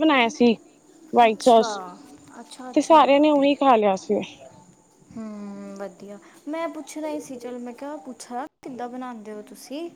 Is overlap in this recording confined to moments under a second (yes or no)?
yes